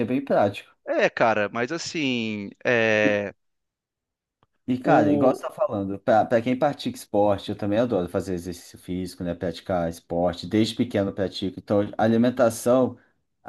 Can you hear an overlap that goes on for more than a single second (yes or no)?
no